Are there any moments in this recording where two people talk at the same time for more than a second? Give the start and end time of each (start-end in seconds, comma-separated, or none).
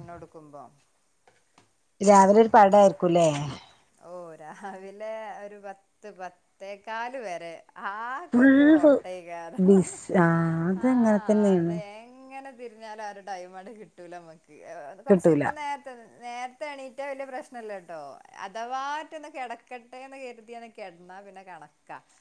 none